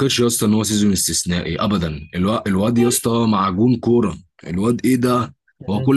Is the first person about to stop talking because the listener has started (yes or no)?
no